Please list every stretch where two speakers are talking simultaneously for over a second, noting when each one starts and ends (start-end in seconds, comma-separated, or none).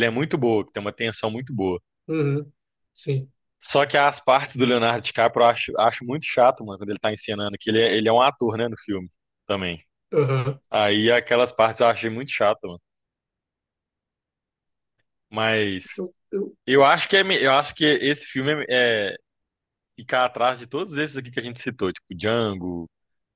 none